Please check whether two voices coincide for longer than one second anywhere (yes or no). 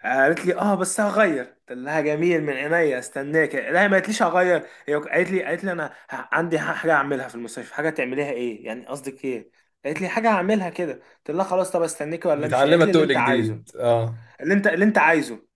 yes